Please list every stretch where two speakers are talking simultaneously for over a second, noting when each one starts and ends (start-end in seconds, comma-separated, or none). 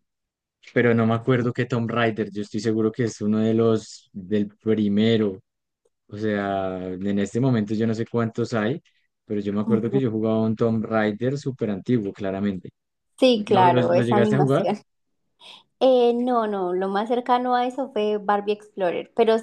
13.3-14.7